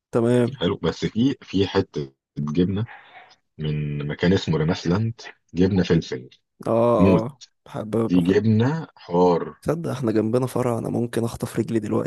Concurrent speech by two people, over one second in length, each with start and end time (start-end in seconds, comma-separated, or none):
none